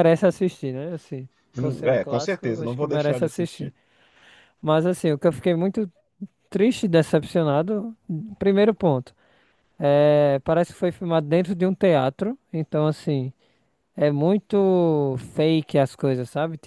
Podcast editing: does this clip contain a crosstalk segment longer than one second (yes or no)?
yes